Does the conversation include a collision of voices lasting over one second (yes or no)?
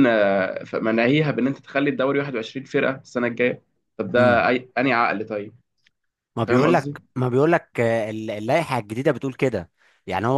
no